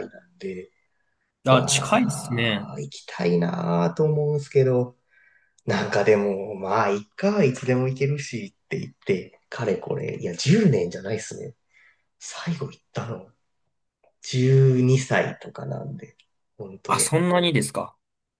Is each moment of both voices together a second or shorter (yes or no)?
no